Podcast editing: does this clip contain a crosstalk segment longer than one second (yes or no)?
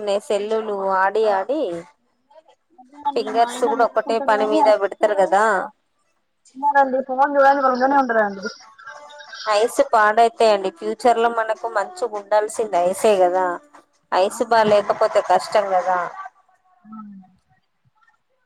yes